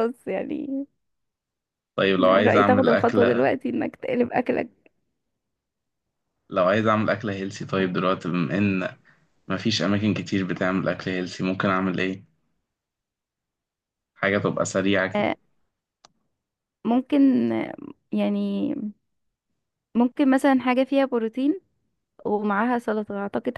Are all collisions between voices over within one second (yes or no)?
no